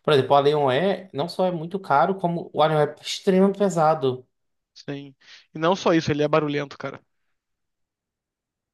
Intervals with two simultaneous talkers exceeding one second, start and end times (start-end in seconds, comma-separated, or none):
none